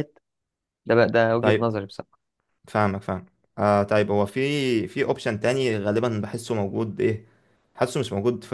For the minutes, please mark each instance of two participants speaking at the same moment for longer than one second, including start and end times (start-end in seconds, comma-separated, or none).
none